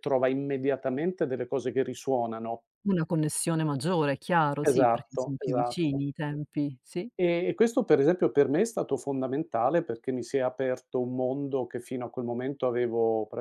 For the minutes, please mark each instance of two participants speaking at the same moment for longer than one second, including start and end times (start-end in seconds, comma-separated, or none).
4.7-6.0